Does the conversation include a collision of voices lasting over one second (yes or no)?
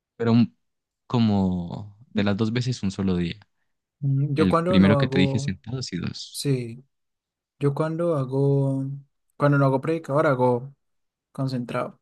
yes